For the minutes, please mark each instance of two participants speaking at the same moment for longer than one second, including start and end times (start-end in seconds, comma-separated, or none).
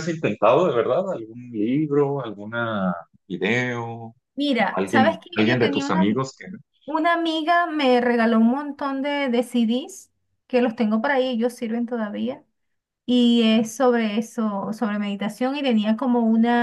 4.6-6.0